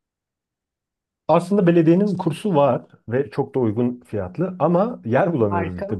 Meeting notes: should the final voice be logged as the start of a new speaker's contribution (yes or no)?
no